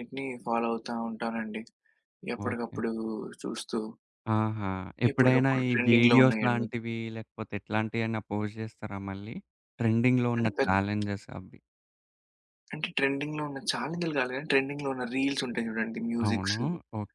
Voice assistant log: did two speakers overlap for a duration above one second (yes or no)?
yes